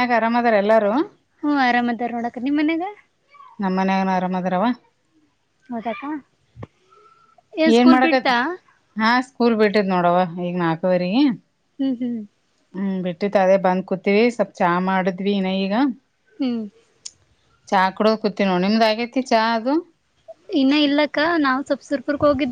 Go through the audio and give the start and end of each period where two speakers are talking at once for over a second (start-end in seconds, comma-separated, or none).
none